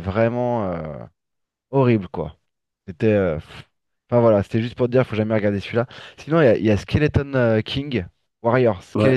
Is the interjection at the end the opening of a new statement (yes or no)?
yes